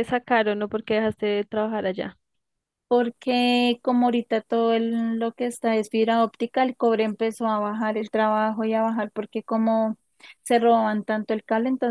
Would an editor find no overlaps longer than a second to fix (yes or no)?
yes